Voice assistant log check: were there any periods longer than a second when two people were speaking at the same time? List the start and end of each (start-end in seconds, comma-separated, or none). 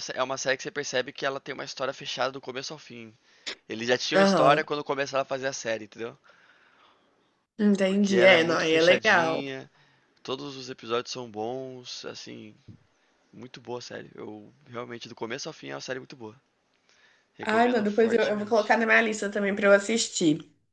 7.8-9.4, 17.4-18.8